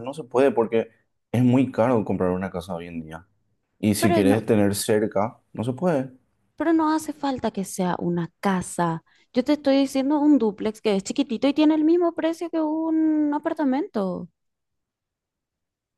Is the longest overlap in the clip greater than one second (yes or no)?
no